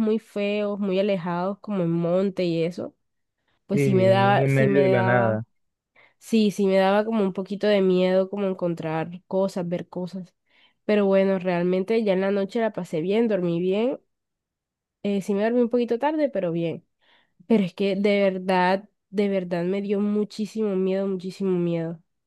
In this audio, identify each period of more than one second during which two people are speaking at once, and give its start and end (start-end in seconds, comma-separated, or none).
3.7-5.4